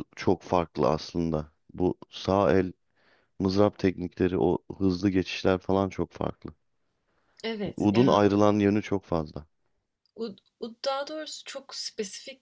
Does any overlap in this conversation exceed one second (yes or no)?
no